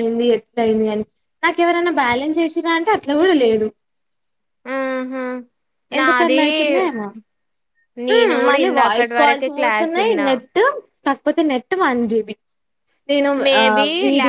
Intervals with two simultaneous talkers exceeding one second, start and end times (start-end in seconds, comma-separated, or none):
8.2-10.3